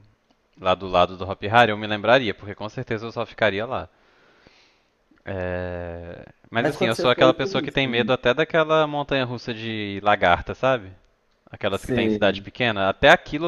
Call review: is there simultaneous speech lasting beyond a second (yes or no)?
yes